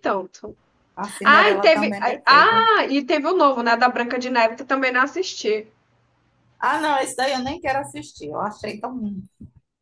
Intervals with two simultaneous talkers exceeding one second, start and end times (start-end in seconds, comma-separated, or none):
1.2-2.7